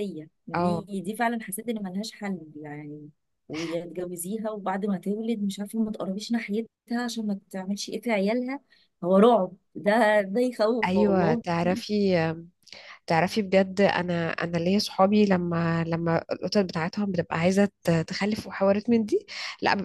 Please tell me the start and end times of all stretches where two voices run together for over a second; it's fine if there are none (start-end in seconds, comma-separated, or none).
none